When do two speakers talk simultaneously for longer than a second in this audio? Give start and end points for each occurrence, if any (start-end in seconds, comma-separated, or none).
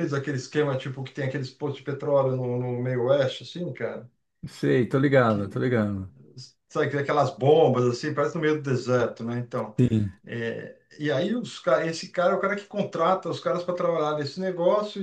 none